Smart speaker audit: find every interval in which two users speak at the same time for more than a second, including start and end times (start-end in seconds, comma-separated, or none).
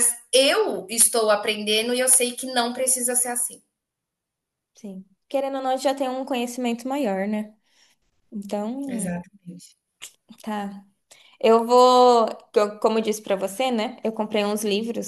none